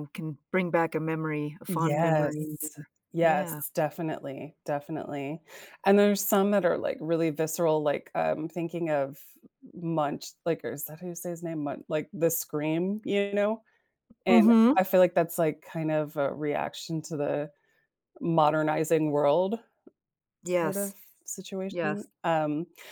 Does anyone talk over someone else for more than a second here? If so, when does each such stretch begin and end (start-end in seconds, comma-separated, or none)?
1.7-3.6